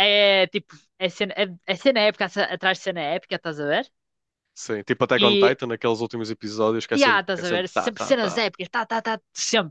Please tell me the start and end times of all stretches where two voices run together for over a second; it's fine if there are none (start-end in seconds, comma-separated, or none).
6.9-8.4